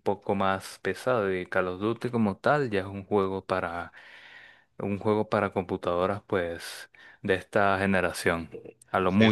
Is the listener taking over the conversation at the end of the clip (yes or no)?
no